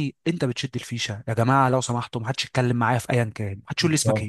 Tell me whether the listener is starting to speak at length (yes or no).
yes